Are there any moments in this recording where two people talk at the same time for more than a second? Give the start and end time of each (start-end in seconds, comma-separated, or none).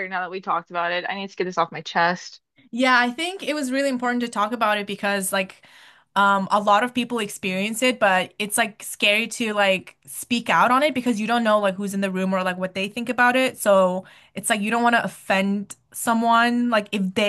none